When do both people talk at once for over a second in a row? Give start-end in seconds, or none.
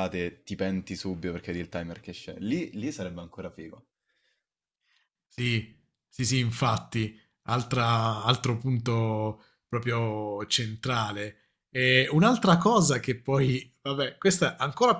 none